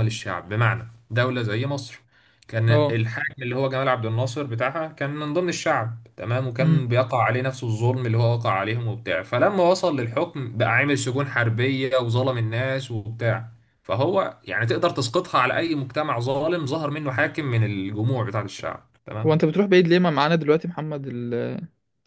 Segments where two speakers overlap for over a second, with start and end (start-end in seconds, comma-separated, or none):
none